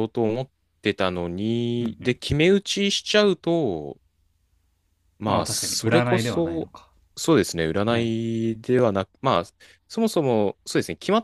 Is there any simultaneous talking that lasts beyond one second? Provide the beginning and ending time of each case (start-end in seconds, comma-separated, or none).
5.3-6.7